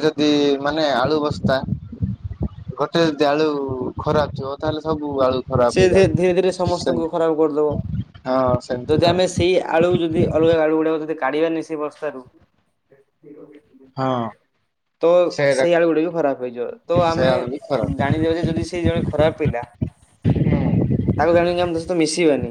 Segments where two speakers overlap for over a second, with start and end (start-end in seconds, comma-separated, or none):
5.7-7.7